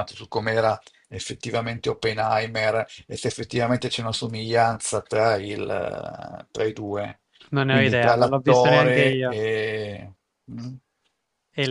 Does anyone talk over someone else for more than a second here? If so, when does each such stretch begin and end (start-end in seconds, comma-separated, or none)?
7.7-9.4